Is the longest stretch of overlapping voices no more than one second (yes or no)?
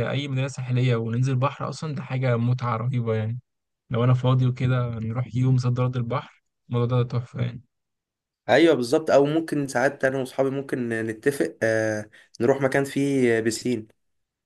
yes